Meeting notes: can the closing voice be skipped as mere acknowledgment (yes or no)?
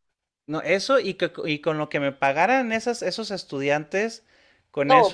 no